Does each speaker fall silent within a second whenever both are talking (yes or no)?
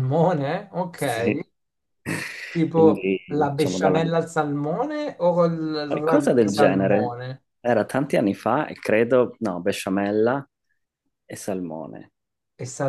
no